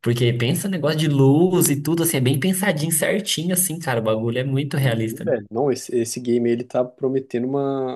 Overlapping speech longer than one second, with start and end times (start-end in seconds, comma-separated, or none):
none